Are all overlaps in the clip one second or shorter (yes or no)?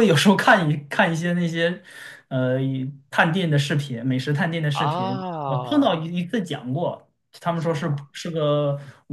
no